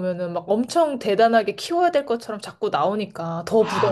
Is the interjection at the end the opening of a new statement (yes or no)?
yes